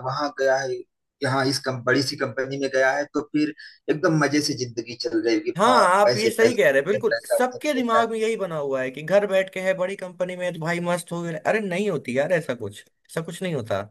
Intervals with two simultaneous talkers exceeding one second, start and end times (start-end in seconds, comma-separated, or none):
5.6-8.0